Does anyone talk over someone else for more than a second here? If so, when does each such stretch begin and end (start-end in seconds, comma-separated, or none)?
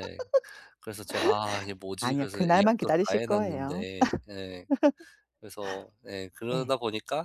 2.0-3.8